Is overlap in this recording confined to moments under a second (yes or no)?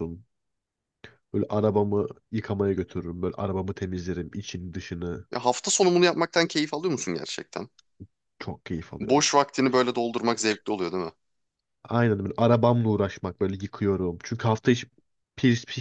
yes